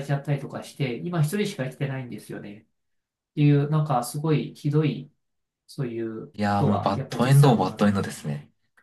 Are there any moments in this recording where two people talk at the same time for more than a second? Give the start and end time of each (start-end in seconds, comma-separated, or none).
6.3-7.9